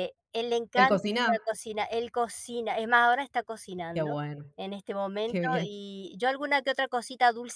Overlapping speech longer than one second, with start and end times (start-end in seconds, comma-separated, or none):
none